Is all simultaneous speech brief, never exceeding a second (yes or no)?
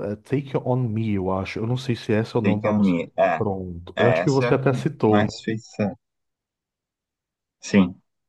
no